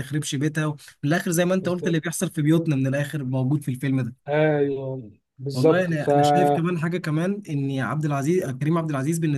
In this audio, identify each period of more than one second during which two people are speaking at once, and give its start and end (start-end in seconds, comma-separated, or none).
none